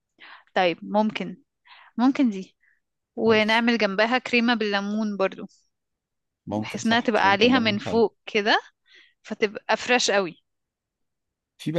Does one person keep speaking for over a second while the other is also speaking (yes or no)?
yes